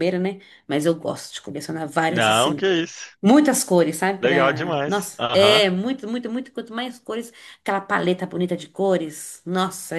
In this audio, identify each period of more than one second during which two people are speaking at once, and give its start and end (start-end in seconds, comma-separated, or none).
4.2-5.6